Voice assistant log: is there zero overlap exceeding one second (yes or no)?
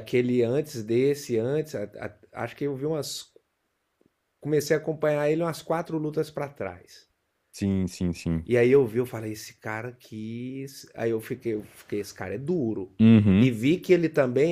yes